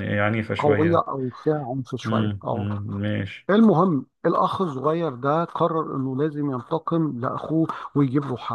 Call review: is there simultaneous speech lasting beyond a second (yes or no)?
no